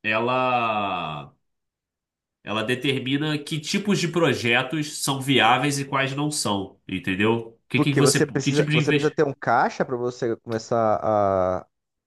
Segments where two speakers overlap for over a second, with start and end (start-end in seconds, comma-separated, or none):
7.7-9.2